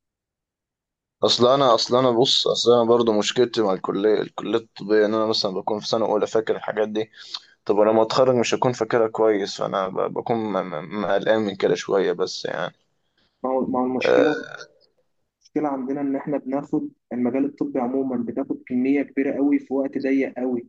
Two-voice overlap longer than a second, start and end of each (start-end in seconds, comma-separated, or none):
none